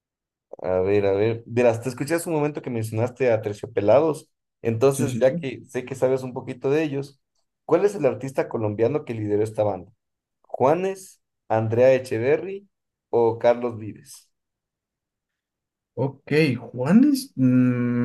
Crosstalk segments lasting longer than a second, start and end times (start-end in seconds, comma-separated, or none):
none